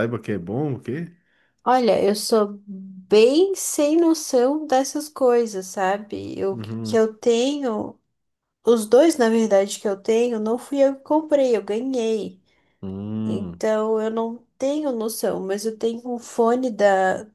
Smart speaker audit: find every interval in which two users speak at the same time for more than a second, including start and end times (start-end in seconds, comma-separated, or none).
none